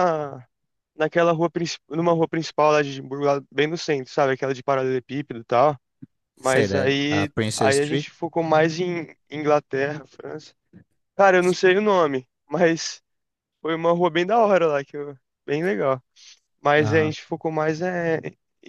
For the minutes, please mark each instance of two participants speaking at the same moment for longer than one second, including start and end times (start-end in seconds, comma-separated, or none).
6.4-8.1